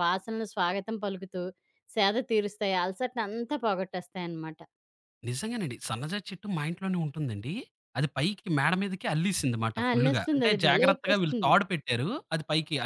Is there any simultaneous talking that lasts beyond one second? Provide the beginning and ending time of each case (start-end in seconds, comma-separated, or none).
9.8-11.5